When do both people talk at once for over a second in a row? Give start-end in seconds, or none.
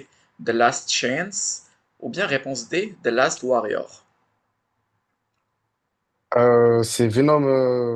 none